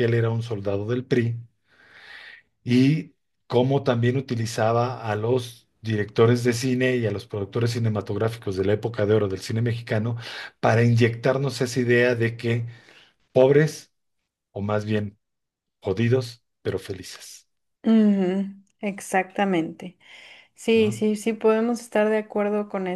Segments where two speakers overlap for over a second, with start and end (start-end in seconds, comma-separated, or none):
none